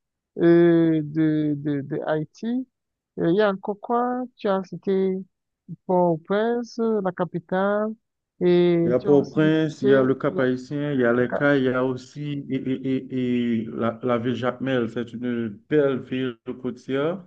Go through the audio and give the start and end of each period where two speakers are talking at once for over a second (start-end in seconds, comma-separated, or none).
8.8-10.5